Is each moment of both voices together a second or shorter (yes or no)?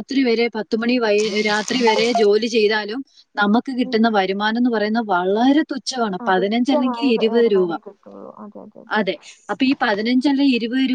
no